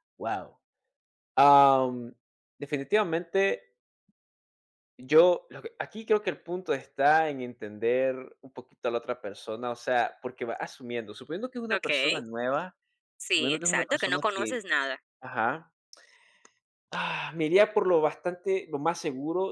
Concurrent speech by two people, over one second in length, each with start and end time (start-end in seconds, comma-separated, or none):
13.3-14.6